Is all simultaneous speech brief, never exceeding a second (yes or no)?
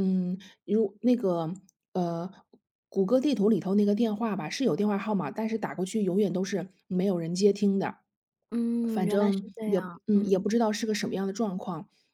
no